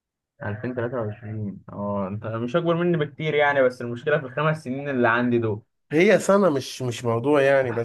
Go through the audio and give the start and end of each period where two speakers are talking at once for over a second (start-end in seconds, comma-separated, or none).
none